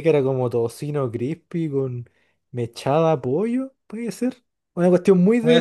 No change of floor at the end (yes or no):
yes